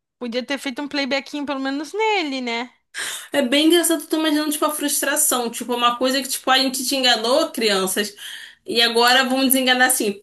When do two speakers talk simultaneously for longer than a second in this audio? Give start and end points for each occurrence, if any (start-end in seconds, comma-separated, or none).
none